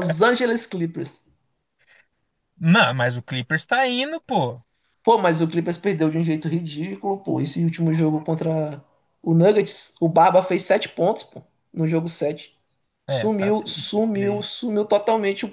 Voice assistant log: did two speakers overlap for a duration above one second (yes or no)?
yes